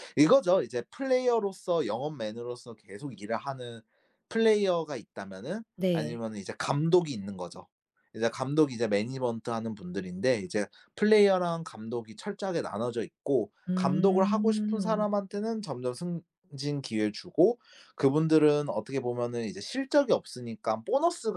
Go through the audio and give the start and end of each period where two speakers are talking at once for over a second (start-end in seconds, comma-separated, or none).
13.7-15.1